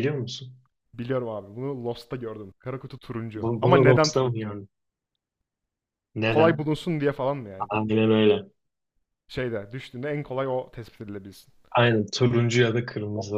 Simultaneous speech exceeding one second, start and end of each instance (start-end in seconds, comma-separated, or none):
3.3-4.6